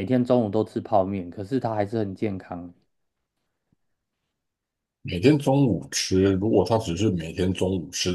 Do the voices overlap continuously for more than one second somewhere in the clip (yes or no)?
no